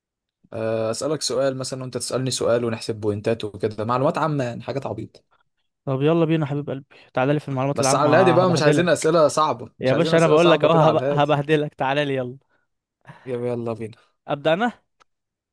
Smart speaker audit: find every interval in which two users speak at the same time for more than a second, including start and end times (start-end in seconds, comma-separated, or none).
7.7-9.1, 9.8-11.4